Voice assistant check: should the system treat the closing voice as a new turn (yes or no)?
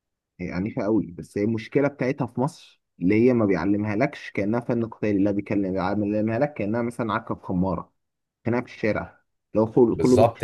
yes